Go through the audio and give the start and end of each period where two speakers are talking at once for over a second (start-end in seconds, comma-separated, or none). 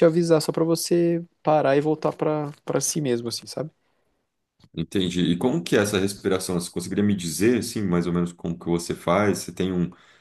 none